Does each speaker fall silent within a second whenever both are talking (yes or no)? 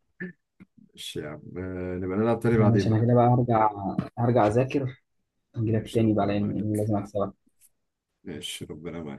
no